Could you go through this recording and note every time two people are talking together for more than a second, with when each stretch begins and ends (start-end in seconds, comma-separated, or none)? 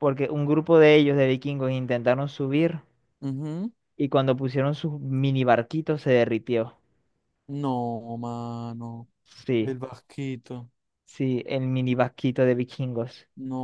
none